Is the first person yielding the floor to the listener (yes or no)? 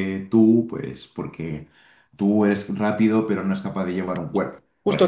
yes